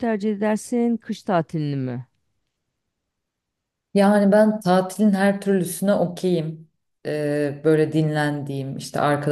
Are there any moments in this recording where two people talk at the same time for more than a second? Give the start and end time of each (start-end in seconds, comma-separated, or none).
none